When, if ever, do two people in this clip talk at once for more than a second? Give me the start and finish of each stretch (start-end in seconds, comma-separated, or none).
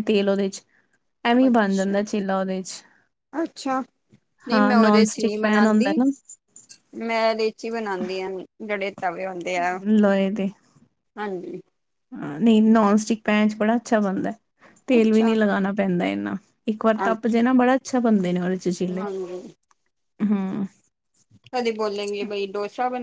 4.5-6.0